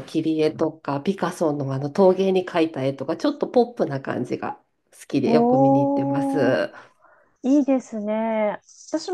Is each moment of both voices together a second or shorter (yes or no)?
no